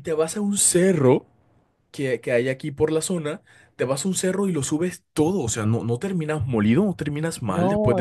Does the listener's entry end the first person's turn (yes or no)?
yes